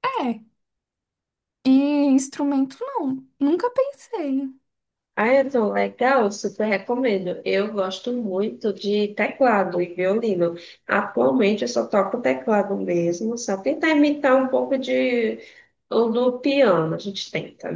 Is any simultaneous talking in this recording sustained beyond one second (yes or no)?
no